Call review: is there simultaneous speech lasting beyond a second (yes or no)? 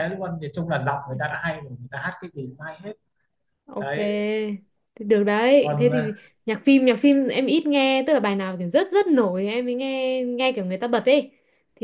no